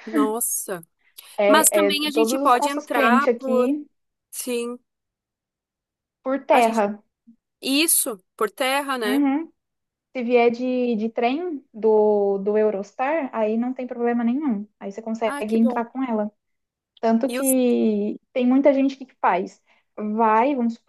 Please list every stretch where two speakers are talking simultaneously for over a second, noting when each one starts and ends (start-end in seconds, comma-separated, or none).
1.5-3.7